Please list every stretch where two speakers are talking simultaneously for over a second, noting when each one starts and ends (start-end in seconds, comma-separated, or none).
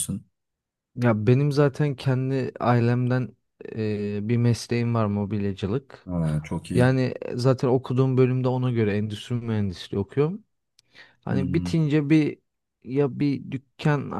none